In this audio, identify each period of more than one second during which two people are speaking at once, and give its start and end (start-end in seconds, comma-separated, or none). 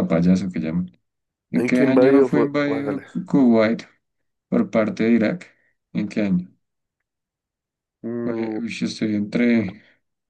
1.5-3.0